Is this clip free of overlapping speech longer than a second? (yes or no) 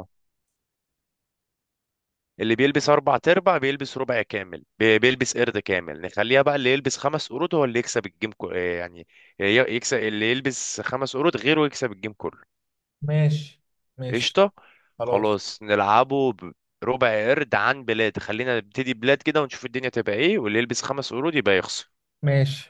yes